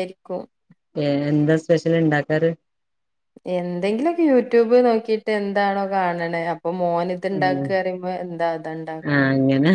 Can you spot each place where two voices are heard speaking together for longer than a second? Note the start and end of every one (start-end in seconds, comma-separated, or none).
none